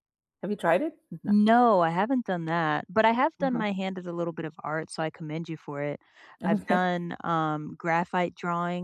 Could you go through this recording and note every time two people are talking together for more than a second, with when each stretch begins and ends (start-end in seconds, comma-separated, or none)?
none